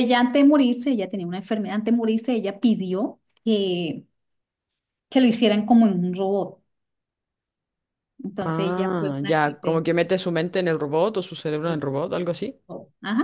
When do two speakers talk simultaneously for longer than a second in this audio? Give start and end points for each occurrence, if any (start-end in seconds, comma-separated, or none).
8.4-9.8